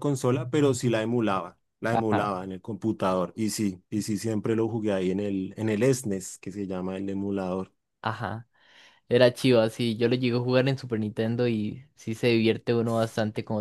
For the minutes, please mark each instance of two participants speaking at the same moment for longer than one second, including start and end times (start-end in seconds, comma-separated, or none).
none